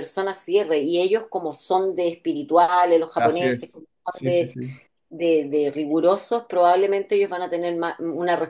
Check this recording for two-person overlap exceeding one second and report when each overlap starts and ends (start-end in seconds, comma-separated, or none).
3.1-4.6